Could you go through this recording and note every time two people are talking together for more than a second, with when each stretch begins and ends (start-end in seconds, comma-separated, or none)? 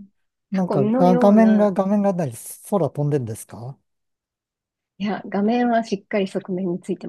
0.5-1.7